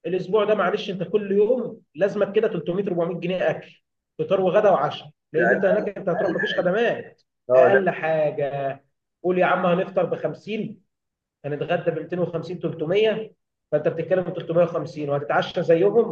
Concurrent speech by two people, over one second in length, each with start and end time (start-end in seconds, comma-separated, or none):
5.3-6.7